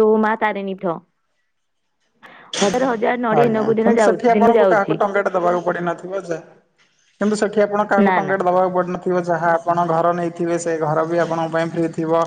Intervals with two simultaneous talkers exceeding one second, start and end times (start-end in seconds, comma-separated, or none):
3.4-5.0